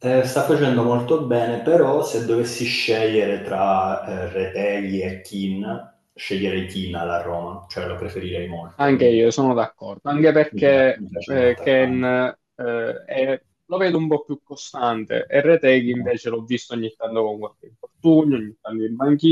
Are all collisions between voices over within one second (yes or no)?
no